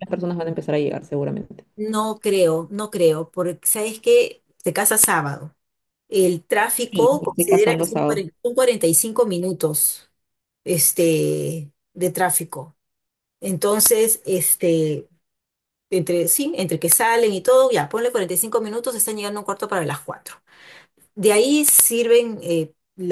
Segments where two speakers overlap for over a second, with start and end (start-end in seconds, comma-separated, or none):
6.9-8.3